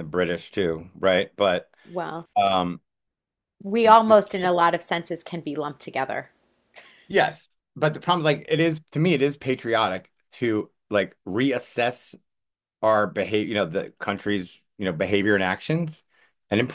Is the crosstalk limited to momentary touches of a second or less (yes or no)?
yes